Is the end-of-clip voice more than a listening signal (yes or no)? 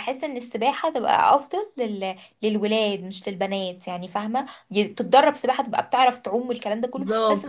yes